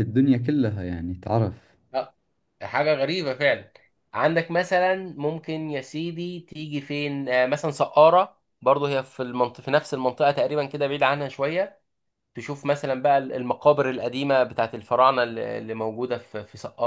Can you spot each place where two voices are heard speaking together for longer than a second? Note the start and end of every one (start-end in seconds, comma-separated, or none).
none